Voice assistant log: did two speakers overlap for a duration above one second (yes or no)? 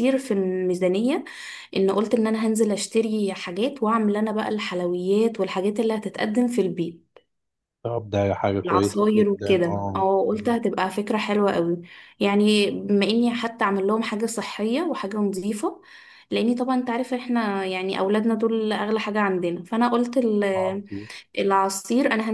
yes